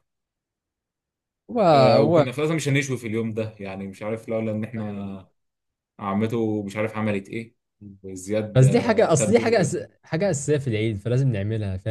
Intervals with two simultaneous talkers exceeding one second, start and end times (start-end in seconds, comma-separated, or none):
8.6-9.8